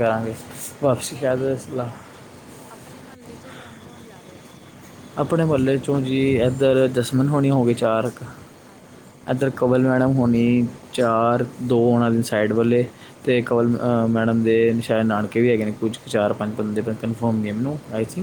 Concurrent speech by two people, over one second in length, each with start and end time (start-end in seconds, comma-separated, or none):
none